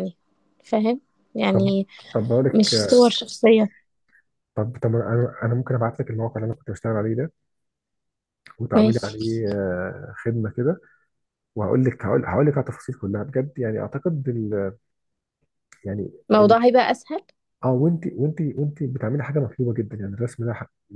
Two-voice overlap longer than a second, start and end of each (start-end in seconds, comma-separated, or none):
none